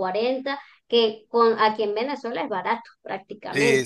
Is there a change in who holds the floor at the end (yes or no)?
yes